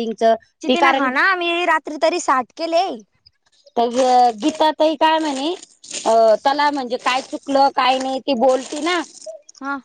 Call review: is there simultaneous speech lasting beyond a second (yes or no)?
no